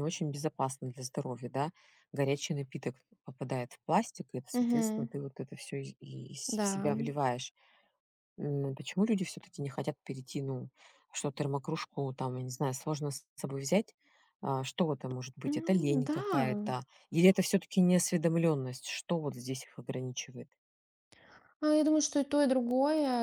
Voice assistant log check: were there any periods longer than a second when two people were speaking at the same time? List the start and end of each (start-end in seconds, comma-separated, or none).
none